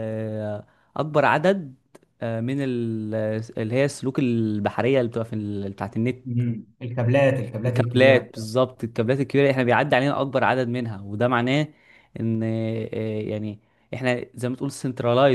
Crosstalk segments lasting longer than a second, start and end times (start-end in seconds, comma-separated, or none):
none